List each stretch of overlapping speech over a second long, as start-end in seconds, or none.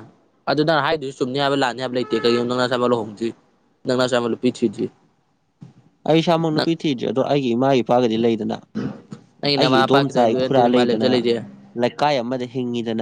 9.6-11.1